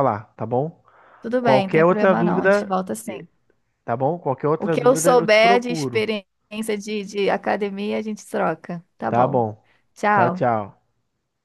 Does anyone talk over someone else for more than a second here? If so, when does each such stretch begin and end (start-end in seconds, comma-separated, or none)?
1.4-3.2, 4.6-6.1